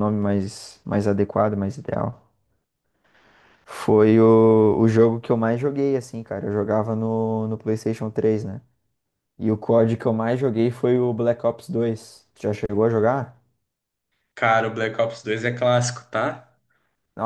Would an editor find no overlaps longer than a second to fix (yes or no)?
yes